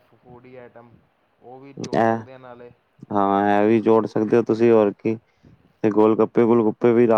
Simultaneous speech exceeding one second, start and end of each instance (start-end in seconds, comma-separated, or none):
none